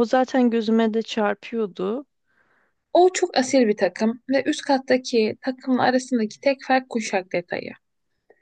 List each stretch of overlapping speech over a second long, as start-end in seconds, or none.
none